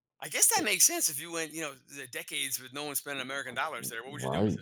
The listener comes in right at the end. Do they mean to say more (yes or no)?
yes